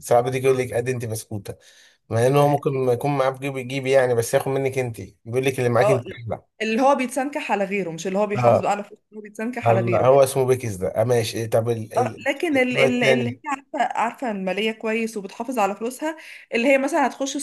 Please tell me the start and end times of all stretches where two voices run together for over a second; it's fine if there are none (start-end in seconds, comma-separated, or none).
12.0-13.4